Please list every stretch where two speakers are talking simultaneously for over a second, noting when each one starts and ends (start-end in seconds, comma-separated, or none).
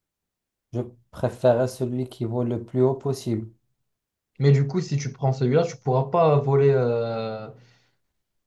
none